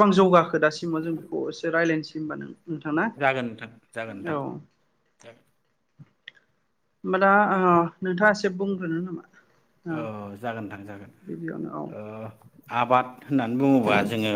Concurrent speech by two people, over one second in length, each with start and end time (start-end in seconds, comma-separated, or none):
none